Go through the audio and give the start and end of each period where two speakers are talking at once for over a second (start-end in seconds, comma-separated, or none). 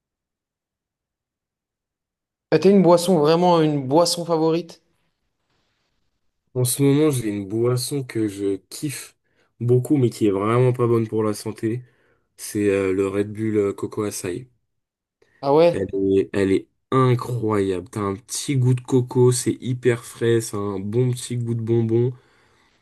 none